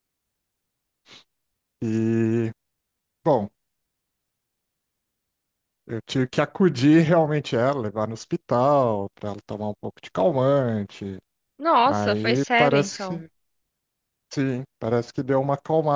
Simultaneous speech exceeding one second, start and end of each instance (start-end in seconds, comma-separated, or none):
11.8-13.2